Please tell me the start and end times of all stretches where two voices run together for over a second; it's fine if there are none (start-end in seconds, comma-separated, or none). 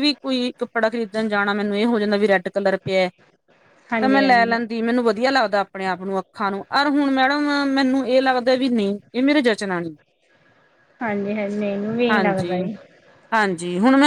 none